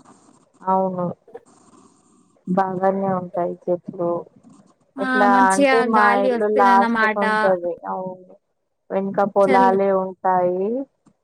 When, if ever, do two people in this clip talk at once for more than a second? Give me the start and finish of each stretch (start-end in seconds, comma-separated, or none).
5.0-7.2